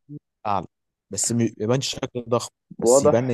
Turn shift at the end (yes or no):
yes